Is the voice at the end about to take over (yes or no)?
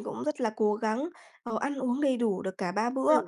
no